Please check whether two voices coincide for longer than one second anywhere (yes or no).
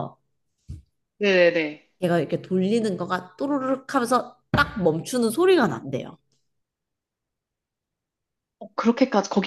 no